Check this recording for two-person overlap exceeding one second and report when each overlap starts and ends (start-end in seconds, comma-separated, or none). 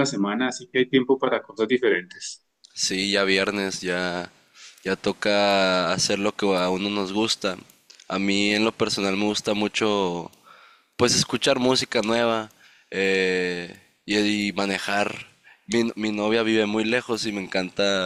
none